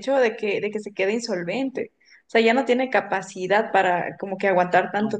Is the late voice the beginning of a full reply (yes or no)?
no